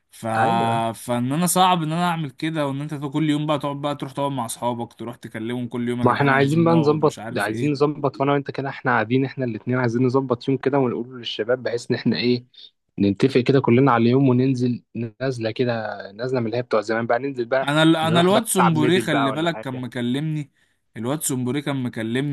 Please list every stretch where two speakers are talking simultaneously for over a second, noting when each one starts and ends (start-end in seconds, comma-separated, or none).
6.0-7.9, 17.6-19.9